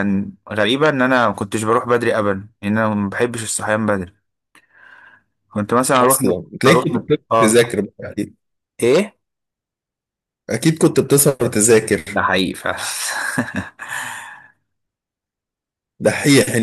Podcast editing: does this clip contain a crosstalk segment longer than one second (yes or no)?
yes